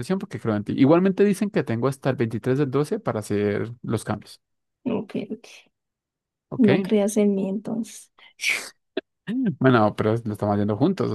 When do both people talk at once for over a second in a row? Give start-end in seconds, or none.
none